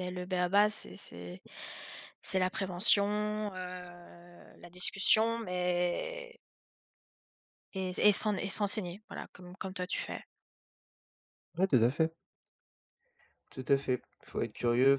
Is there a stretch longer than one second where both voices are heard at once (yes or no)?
no